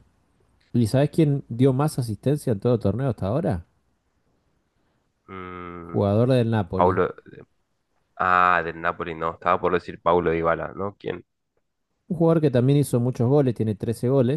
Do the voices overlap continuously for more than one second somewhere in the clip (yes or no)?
no